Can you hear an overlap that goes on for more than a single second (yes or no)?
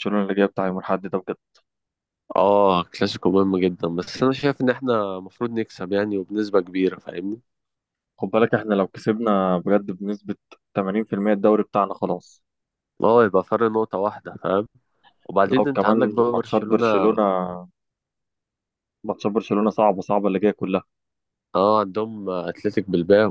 yes